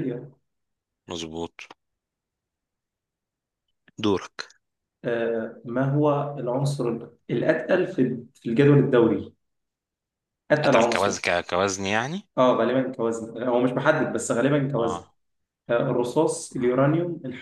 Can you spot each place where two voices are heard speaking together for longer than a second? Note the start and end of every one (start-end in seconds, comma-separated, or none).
none